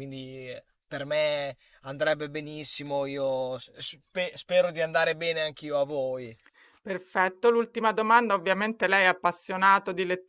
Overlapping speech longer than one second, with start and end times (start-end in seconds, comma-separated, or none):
none